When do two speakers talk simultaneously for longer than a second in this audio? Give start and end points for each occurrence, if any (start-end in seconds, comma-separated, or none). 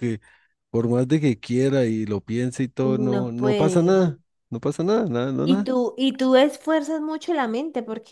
2.8-4.0